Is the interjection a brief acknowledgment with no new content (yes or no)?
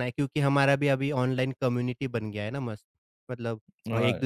yes